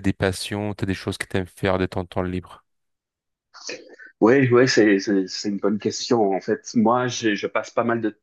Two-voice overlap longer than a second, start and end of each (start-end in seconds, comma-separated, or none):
none